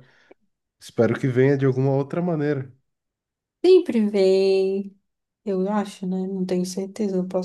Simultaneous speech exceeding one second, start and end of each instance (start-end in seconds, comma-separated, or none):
none